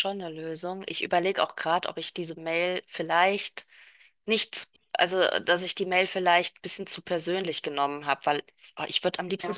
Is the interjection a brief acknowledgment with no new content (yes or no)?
yes